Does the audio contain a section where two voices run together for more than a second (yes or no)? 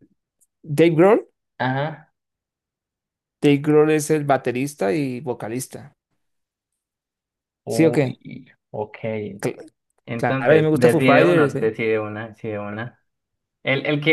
yes